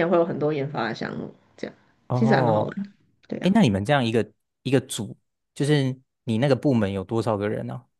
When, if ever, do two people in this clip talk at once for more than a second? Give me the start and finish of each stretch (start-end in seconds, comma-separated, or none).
none